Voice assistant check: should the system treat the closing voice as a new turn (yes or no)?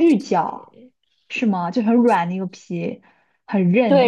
yes